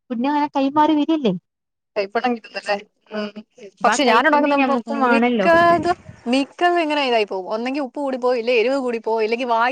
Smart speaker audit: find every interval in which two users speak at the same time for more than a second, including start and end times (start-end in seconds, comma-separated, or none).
3.8-5.5